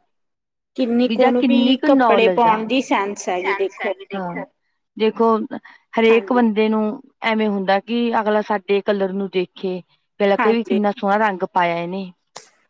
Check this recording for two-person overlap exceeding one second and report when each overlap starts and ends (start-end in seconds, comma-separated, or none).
1.1-2.6